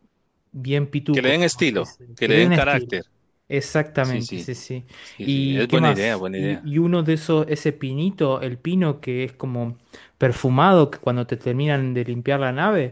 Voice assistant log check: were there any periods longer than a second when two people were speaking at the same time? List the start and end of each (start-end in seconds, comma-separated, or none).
1.1-2.9, 5.2-6.7